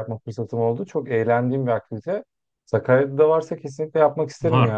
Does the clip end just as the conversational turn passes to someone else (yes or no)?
yes